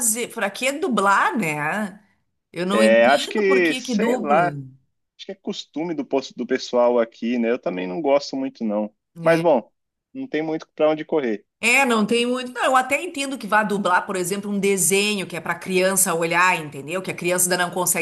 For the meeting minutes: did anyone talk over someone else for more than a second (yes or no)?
yes